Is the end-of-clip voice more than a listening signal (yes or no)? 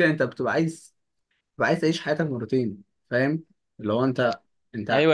yes